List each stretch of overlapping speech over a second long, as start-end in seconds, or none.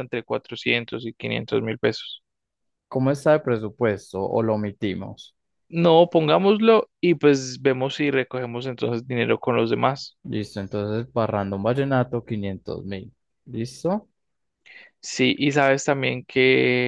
none